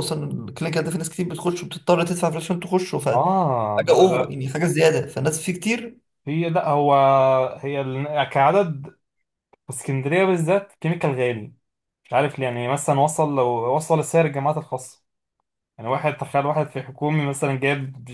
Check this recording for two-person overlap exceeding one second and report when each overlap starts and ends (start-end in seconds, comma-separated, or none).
3.1-4.4